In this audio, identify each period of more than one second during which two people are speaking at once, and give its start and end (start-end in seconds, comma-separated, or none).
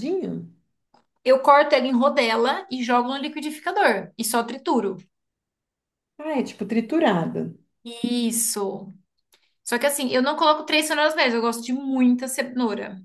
none